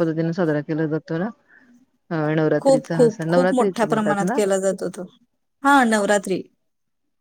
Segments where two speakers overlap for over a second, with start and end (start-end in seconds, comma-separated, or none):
2.6-4.4